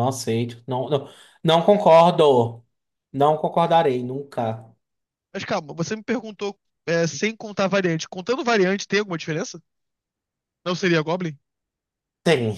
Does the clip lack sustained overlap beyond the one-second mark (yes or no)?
yes